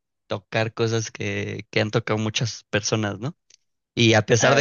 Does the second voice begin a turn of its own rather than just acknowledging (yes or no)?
no